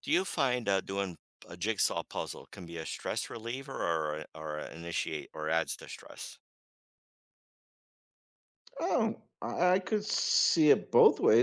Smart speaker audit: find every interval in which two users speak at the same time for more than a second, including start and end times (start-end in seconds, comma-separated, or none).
none